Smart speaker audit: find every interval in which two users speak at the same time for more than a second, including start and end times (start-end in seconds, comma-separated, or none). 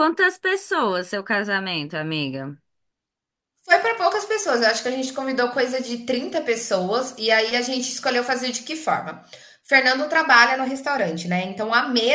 none